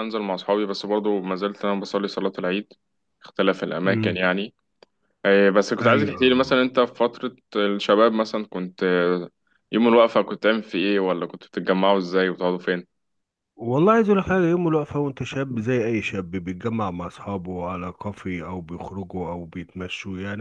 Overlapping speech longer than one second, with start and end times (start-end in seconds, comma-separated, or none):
none